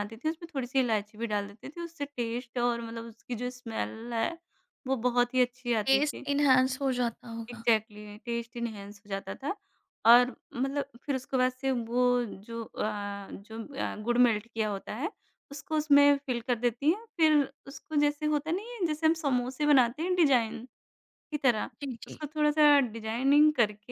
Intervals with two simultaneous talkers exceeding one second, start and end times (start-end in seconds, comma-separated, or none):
none